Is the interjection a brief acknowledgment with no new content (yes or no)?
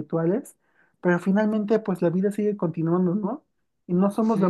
yes